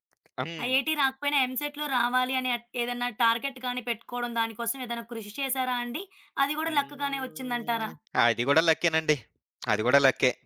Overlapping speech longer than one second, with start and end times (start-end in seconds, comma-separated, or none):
6.7-7.9